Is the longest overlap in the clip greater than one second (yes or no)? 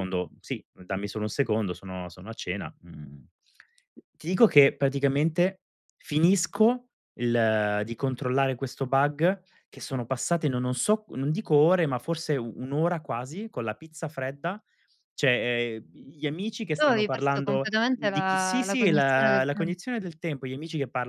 yes